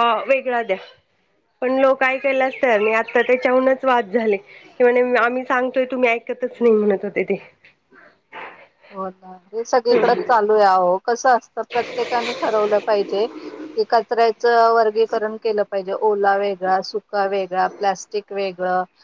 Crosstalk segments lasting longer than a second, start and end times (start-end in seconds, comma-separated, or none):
none